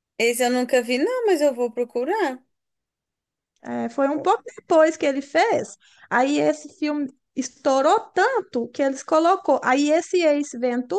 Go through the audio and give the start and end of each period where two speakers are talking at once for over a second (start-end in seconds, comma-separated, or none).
none